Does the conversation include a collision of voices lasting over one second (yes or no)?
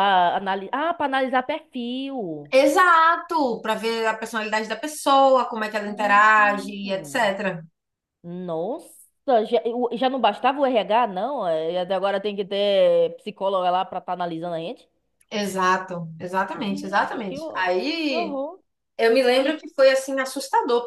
yes